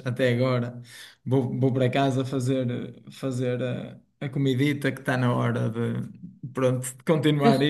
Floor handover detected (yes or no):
no